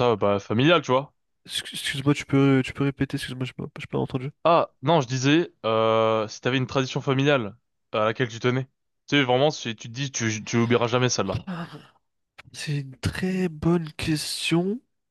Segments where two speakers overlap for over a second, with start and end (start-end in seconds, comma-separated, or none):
none